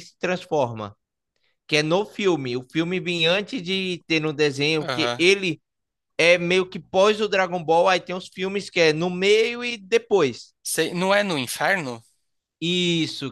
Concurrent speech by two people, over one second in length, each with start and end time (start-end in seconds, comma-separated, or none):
none